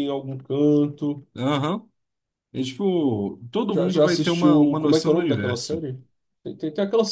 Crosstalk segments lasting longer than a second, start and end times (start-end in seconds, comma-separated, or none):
3.7-5.8